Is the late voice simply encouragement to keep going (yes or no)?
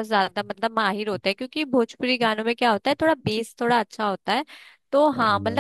yes